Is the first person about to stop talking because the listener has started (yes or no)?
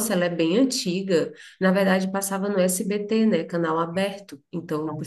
no